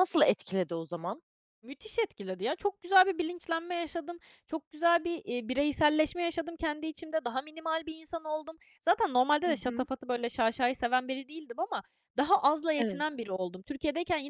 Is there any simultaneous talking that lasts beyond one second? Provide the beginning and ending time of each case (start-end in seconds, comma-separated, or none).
none